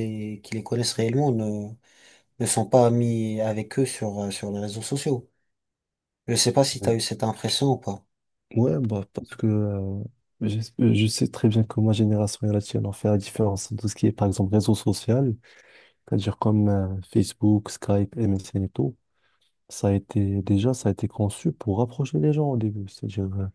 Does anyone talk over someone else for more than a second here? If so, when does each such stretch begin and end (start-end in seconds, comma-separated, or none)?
none